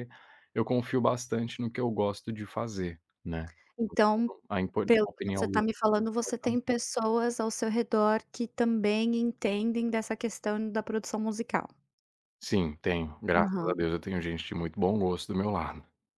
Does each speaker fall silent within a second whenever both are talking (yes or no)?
no